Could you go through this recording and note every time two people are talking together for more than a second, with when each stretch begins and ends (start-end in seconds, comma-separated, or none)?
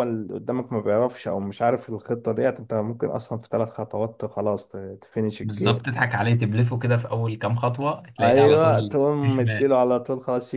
8.2-9.7